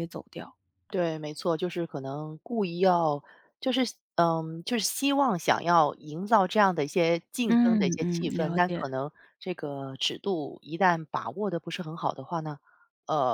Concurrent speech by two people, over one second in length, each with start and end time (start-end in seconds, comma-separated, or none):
7.5-8.8